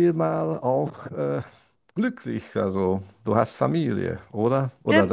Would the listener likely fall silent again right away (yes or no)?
no